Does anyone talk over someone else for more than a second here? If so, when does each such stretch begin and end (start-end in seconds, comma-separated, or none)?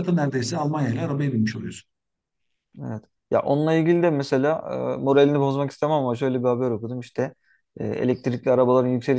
none